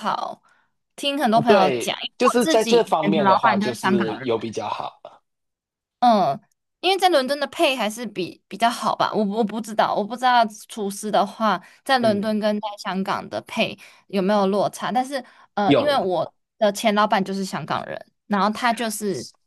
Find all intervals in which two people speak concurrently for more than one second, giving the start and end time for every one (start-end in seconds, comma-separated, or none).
1.5-4.3